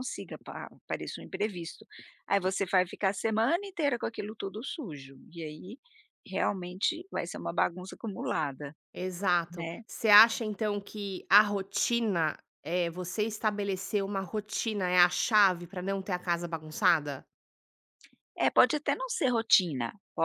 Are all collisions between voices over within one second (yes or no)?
yes